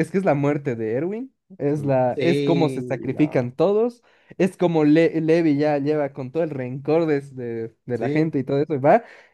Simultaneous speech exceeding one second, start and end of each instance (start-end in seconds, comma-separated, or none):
1.8-3.5